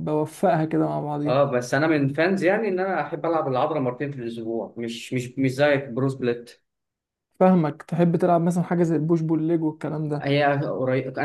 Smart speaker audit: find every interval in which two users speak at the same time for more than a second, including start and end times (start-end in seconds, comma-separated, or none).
none